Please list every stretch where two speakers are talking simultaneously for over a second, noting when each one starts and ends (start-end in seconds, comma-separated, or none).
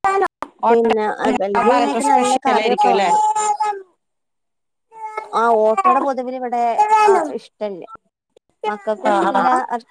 1.7-3.2